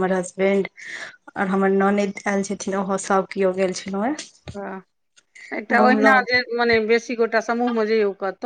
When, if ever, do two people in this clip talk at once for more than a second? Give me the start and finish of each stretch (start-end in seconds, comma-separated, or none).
none